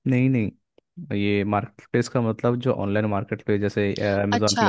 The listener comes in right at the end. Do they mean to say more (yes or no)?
yes